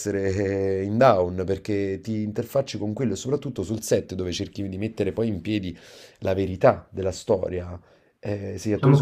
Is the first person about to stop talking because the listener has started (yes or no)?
no